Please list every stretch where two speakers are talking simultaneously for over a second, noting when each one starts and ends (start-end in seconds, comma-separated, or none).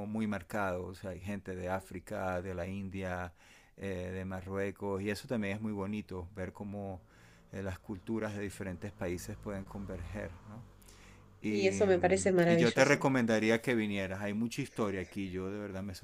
11.5-13.1